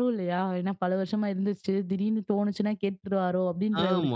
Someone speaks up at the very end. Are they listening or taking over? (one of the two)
taking over